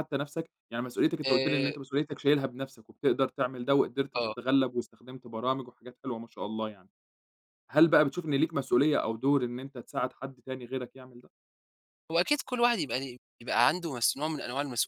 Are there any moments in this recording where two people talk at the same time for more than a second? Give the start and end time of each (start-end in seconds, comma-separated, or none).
none